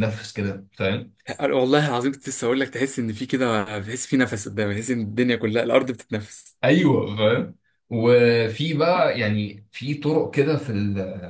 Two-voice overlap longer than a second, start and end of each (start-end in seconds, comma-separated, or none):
none